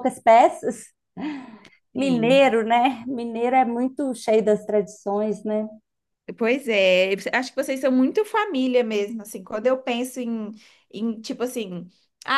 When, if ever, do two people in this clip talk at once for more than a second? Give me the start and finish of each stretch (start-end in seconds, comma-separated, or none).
none